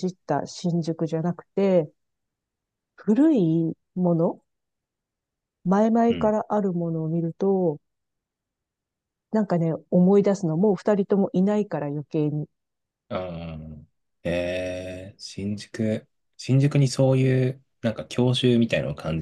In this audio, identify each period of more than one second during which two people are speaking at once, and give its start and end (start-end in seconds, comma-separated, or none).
none